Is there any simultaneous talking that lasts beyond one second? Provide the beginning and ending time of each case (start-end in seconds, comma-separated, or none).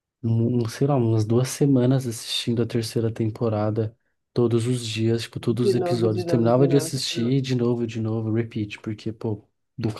5.6-7.3